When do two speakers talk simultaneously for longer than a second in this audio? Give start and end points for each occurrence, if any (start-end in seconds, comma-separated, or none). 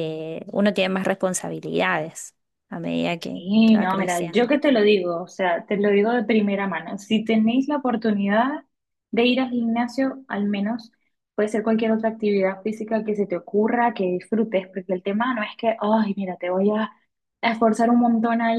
3.2-4.5